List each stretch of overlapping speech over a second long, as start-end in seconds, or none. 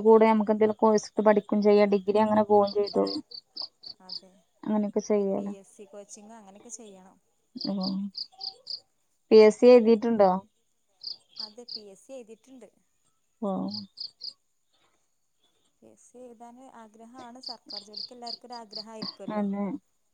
none